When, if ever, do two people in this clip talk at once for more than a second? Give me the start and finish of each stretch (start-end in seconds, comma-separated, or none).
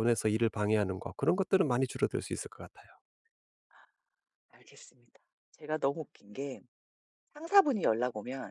none